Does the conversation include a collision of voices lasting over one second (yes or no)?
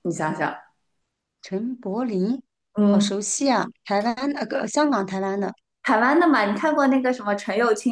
no